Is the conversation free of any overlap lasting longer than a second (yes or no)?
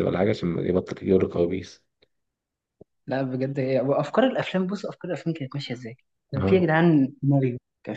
yes